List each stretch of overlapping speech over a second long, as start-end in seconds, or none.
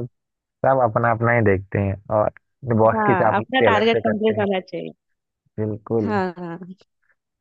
3.0-4.5